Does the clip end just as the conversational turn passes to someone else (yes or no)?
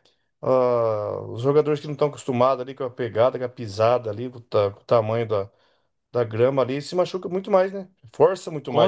yes